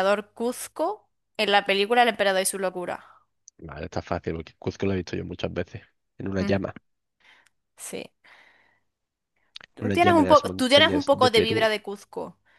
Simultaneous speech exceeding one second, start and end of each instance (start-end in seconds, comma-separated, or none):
9.8-11.7